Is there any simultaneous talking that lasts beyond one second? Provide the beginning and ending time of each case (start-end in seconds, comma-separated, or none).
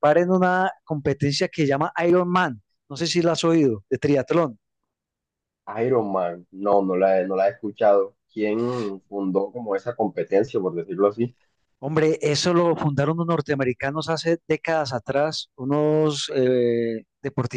none